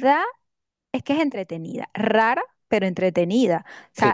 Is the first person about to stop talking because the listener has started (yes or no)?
no